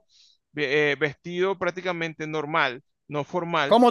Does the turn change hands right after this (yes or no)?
yes